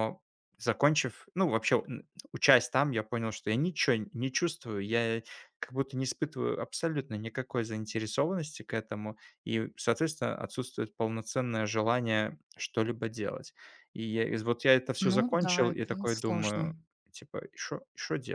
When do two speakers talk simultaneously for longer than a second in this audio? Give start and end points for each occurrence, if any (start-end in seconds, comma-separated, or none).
15.0-16.7